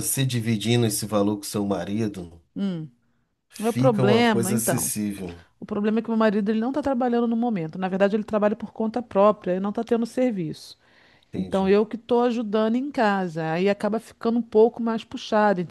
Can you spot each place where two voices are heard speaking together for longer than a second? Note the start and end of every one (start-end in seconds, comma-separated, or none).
3.6-4.9